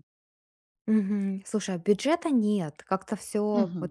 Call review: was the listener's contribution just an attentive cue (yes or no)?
yes